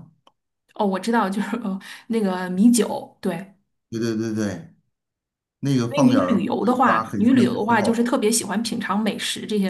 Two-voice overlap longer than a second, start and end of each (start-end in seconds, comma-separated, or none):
5.9-8.1